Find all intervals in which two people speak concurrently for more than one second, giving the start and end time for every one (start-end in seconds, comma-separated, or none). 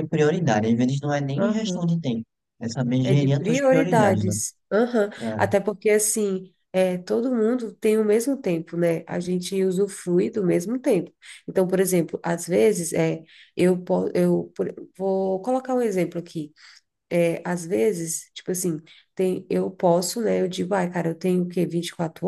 3.0-4.3